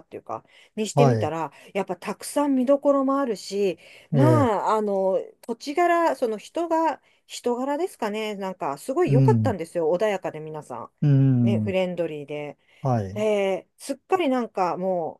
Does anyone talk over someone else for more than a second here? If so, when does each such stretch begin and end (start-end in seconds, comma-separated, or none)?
none